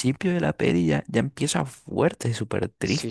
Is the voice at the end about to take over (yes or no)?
yes